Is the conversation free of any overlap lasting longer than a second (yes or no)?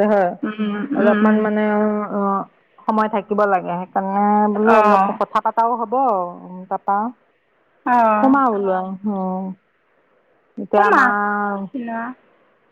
yes